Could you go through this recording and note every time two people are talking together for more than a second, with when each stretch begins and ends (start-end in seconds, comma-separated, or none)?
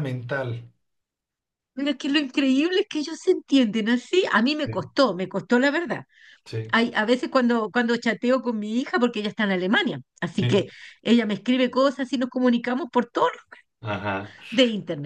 none